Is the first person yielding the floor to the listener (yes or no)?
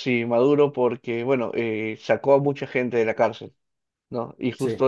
no